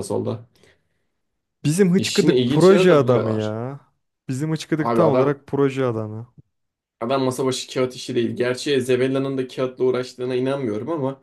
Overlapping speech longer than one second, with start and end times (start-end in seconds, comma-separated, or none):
2.0-3.6